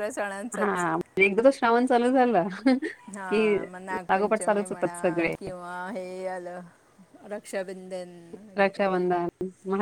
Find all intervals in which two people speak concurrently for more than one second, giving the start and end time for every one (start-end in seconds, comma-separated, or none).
none